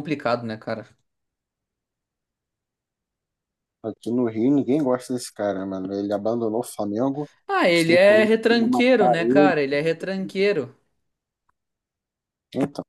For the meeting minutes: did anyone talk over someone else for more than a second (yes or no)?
yes